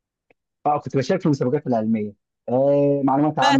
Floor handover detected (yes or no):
no